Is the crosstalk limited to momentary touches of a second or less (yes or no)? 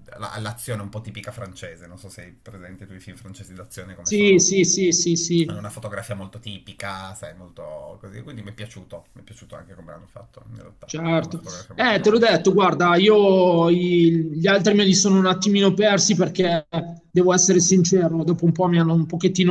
no